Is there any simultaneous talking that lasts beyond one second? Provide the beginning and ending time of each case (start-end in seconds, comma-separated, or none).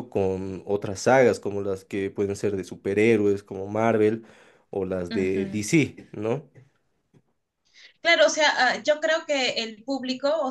none